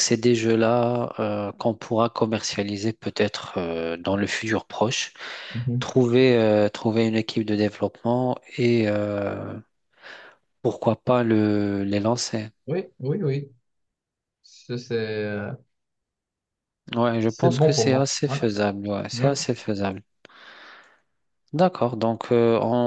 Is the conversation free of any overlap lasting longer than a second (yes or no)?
no